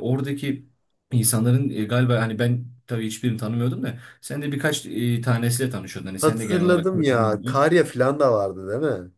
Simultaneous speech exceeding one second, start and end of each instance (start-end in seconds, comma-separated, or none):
6.2-7.6